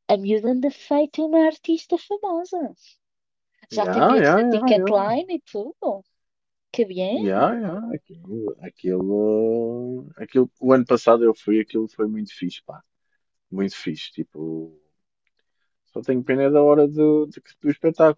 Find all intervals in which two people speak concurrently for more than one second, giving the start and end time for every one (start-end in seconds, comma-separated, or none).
3.7-5.2